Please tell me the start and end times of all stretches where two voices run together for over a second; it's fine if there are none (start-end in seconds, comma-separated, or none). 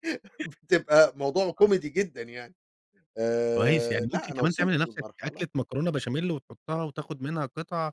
3.6-5.5